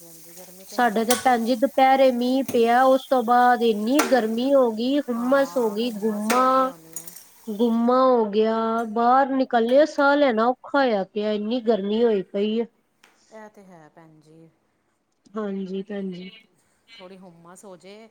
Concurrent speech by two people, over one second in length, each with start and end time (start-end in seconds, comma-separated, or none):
5.2-6.5